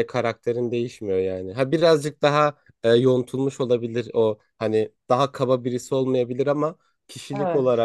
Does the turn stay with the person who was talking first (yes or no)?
yes